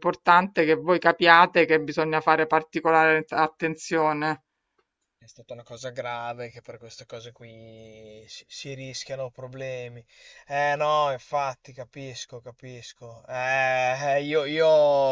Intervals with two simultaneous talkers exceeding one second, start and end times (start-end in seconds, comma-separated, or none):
none